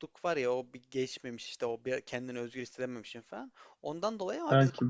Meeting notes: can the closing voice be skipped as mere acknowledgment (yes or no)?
yes